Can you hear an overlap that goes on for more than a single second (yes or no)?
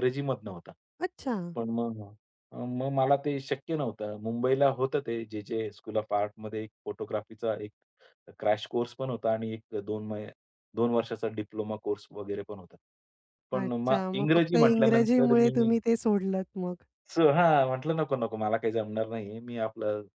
yes